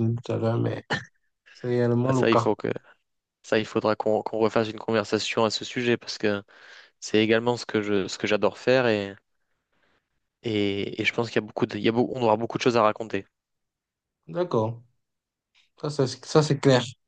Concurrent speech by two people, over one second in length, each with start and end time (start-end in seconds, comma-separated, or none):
none